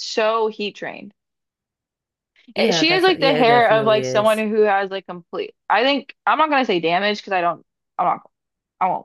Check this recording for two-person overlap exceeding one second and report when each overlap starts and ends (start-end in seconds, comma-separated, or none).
2.5-4.4